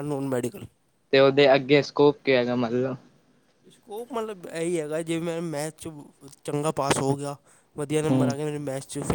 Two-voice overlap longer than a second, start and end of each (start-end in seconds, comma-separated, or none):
none